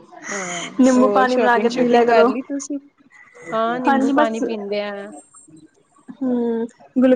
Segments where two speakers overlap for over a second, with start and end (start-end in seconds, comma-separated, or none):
1.0-2.3